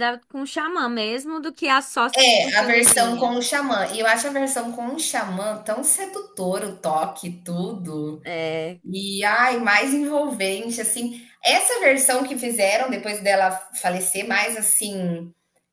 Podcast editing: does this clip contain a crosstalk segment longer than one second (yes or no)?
yes